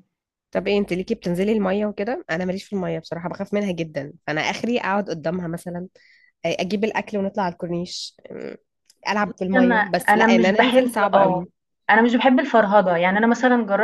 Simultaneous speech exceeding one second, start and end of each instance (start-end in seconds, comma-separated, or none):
9.6-11.4